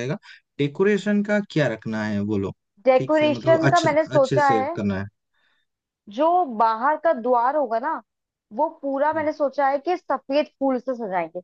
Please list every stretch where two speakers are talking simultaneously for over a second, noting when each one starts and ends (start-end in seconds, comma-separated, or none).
3.0-4.8